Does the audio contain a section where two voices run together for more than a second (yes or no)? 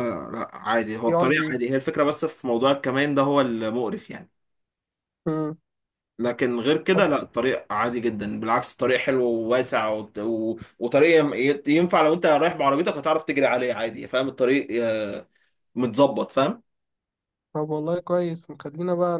no